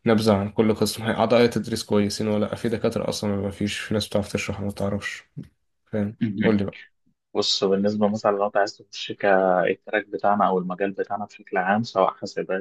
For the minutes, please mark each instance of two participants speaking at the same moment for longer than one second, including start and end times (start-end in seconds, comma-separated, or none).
none